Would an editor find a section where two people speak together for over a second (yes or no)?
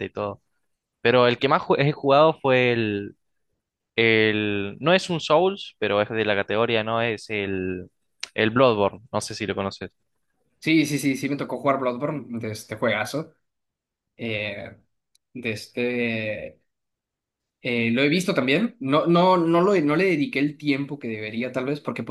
no